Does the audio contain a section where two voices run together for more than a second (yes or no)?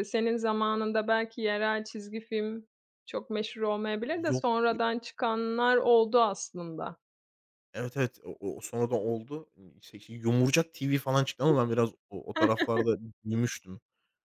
no